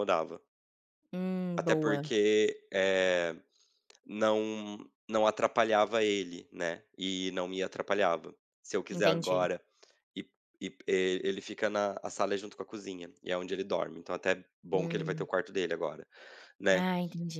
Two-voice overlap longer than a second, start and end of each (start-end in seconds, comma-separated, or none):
none